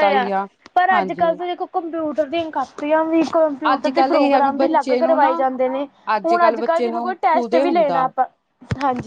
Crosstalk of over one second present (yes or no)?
yes